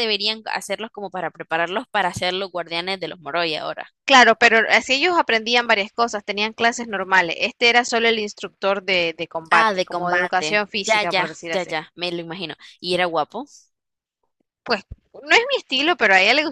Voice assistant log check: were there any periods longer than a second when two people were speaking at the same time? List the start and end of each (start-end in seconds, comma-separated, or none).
9.5-11.7